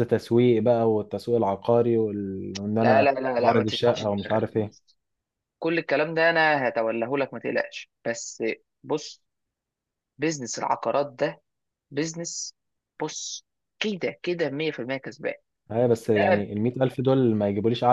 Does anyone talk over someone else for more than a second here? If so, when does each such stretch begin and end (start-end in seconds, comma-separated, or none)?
2.8-4.7